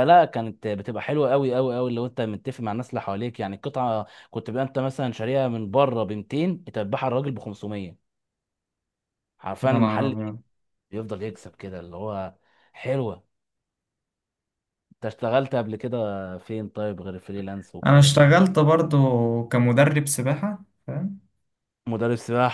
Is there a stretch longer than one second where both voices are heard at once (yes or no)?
no